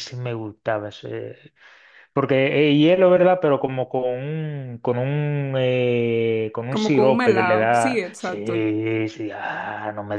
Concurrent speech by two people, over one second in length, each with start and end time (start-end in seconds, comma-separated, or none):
6.7-8.6